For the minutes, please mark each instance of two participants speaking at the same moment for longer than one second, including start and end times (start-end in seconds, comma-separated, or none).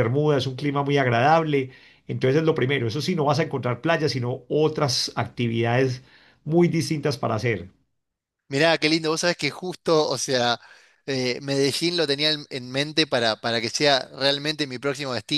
none